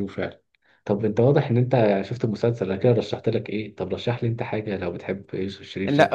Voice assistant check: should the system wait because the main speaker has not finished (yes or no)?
no